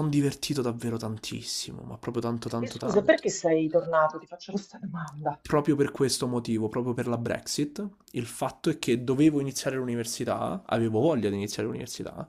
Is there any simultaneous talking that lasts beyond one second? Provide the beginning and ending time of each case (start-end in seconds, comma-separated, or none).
none